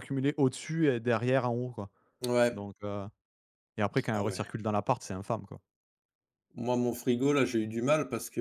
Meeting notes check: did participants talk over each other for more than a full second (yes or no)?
no